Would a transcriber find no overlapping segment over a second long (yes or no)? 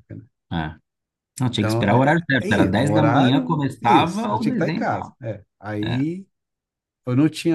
no